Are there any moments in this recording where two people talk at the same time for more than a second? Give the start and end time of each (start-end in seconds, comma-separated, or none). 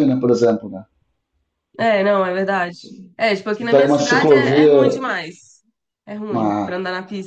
3.5-4.7